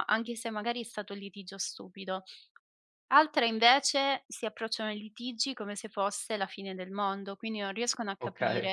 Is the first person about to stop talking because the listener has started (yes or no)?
no